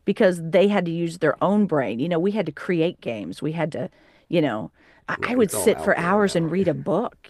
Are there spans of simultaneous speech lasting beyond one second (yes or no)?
yes